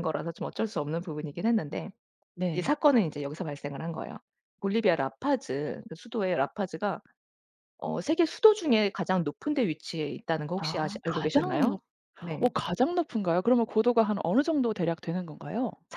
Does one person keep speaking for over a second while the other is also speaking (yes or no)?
yes